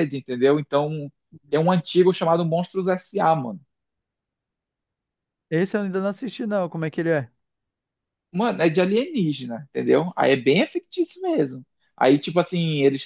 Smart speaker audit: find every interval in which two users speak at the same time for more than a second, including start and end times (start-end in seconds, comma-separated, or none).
none